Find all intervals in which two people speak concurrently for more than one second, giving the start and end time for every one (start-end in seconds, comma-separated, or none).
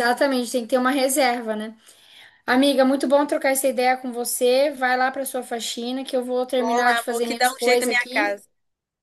6.6-8.4